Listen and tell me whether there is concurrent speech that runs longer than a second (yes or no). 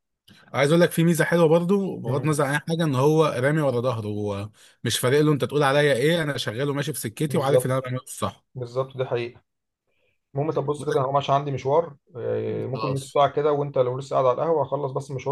no